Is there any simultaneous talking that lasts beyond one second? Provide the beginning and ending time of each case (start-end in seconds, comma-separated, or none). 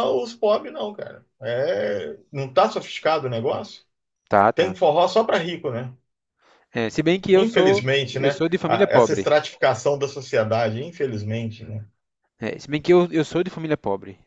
7.3-9.3